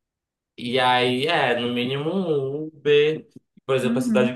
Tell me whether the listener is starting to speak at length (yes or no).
no